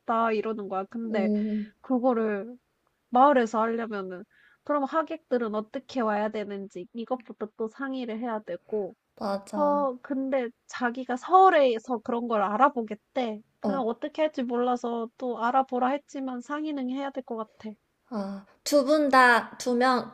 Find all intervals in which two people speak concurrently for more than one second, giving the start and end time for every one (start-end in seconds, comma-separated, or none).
none